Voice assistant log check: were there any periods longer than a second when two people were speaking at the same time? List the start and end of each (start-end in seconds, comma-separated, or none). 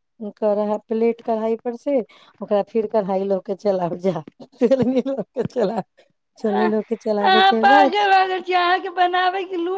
6.5-8.0